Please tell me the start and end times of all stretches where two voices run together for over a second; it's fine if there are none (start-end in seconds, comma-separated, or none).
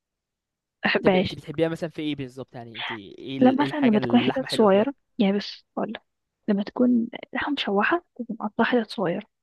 3.4-4.9